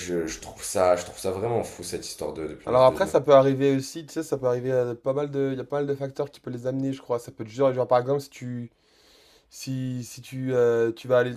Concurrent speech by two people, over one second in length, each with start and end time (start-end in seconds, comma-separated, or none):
none